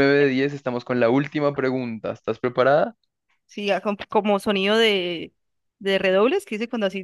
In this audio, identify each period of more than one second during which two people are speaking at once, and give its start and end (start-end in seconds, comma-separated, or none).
none